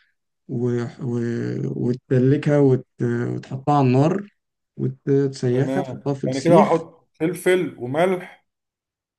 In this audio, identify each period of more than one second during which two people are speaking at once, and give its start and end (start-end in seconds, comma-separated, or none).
5.5-6.8